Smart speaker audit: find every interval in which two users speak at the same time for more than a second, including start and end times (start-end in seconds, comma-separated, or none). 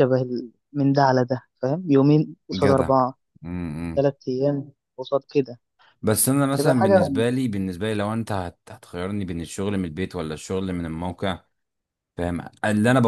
none